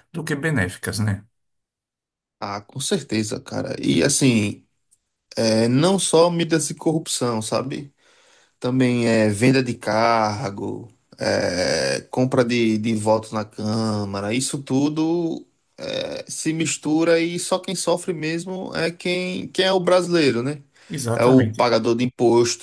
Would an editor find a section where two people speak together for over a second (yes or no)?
no